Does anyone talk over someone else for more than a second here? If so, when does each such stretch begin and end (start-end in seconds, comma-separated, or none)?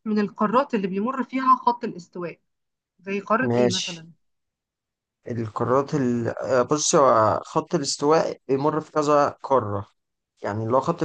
none